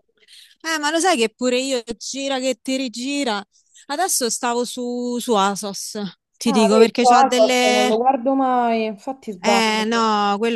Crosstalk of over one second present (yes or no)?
yes